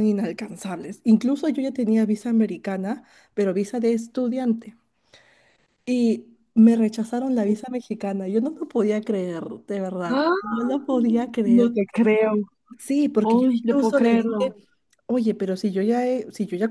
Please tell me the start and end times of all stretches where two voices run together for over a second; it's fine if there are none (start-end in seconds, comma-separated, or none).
13.2-14.5